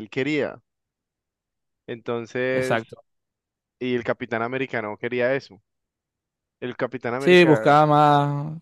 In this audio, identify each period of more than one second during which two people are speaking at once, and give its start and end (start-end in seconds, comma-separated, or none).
none